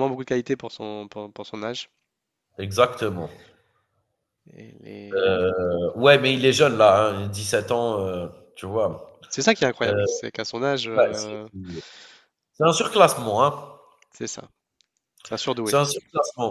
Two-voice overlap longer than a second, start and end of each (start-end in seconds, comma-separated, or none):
none